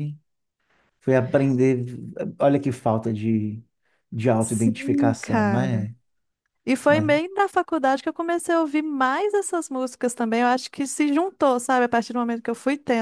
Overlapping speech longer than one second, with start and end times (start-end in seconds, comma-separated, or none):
4.4-5.9